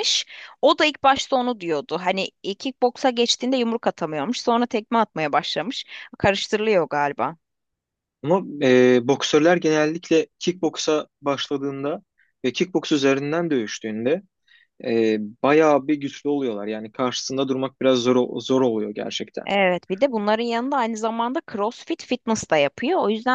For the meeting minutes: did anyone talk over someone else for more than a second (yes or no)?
no